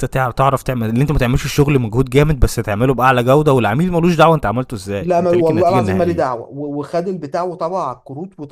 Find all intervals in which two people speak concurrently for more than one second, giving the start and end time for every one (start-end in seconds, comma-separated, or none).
5.0-6.2